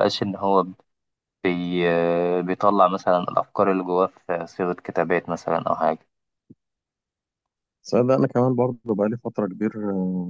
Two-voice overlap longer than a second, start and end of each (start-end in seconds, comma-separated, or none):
none